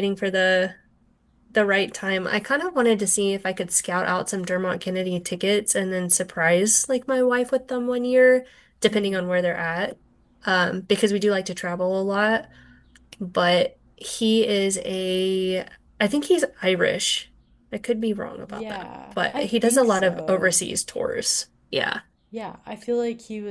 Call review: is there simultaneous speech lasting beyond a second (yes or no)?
yes